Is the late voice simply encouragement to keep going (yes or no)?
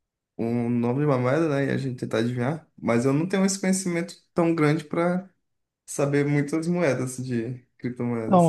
no